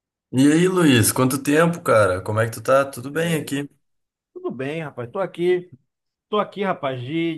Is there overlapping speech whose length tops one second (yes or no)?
no